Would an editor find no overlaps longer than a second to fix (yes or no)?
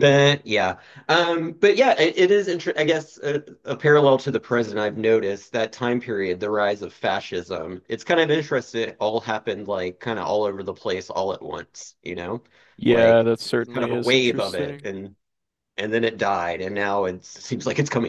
no